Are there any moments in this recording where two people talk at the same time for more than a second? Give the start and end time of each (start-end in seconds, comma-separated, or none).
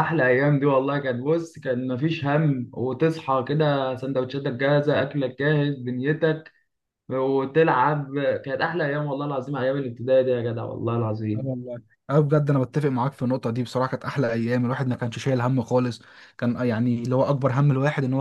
none